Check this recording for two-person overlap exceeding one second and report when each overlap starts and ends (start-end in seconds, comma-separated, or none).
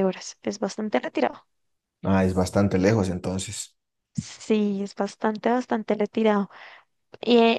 none